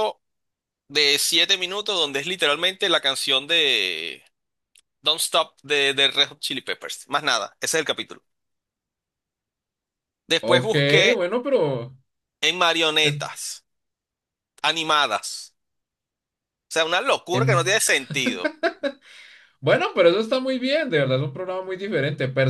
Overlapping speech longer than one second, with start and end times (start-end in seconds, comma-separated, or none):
none